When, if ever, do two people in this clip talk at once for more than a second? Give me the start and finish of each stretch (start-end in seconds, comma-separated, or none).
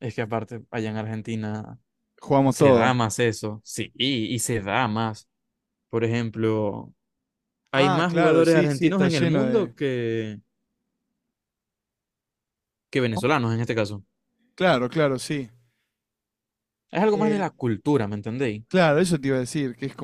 7.7-9.7